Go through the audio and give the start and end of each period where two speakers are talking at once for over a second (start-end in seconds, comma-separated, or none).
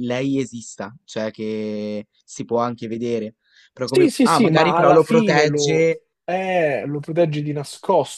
3.8-5.9